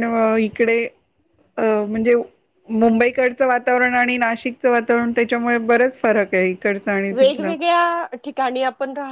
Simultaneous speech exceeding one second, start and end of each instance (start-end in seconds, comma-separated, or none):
none